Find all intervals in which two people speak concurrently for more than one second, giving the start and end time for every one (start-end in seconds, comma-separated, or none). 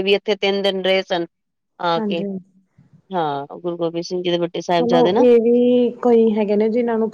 none